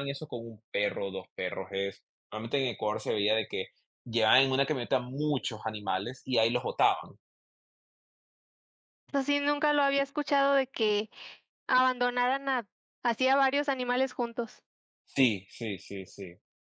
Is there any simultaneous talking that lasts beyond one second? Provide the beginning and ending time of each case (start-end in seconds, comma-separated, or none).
none